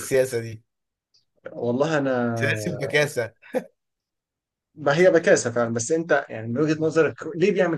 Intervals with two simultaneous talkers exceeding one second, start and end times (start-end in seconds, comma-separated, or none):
none